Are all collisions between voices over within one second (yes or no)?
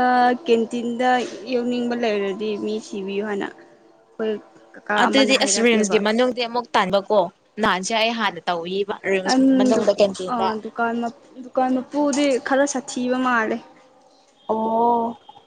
yes